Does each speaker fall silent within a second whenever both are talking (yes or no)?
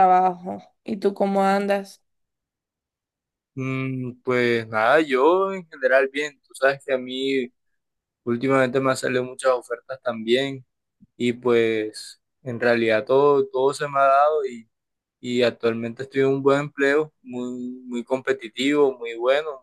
yes